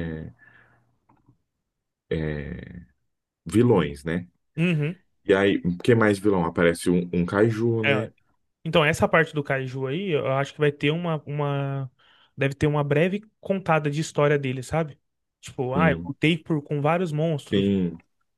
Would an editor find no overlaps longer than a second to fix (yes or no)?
yes